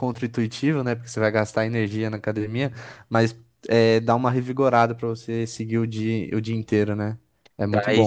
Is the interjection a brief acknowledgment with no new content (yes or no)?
no